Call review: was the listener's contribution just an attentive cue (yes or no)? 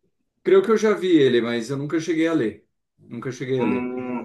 no